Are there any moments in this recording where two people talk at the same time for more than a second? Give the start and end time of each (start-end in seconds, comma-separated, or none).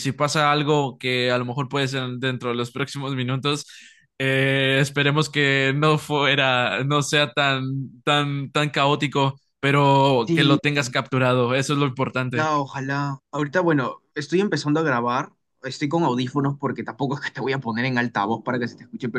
none